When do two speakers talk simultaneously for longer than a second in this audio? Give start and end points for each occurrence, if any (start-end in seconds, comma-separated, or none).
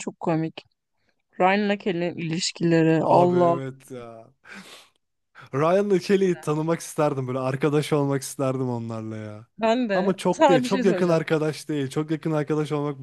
9.9-11.2